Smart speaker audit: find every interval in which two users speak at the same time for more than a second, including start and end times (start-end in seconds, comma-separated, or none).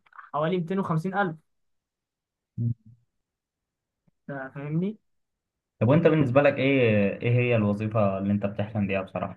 none